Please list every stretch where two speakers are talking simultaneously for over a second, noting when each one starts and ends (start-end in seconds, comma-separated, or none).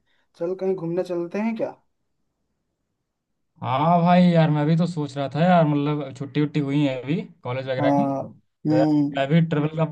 none